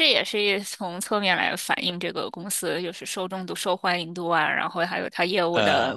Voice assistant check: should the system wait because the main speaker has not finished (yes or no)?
yes